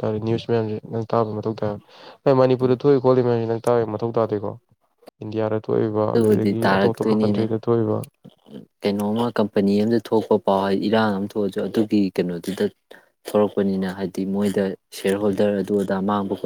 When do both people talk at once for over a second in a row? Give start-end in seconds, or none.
6.1-7.4